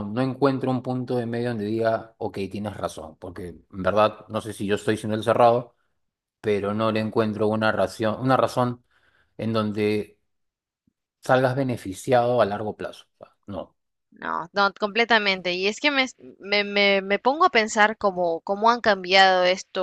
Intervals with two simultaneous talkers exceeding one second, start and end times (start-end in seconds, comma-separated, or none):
none